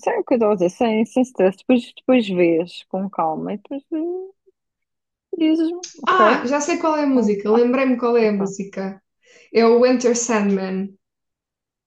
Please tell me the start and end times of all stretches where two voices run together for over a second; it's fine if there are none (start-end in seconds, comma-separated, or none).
none